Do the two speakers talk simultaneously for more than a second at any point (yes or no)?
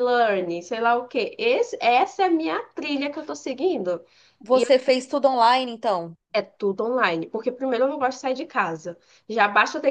no